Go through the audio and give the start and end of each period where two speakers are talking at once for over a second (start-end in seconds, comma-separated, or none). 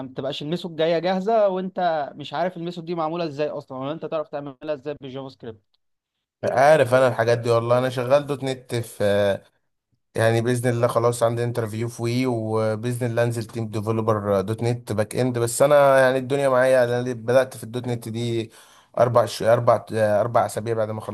none